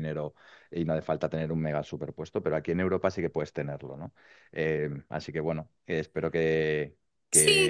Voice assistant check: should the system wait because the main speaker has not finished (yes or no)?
no